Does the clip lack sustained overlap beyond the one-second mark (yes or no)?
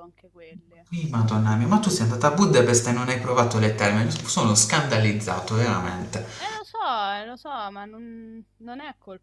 yes